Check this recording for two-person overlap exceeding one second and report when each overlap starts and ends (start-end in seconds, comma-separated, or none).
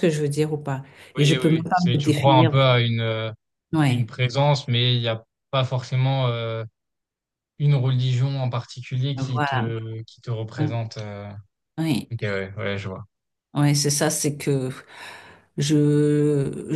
1.2-2.5